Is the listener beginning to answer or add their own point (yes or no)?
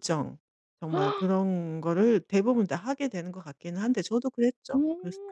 yes